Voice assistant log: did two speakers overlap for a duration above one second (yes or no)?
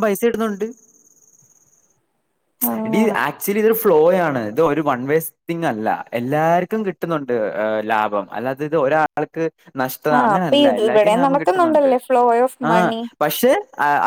yes